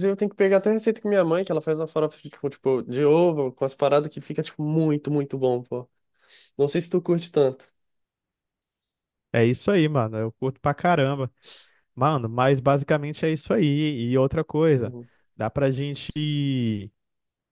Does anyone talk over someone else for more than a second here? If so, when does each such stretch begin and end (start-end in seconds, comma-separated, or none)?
none